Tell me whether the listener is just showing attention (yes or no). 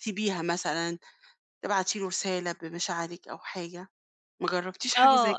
no